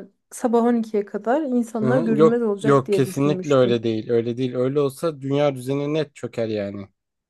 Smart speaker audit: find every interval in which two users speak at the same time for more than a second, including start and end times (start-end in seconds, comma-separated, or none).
1.8-3.9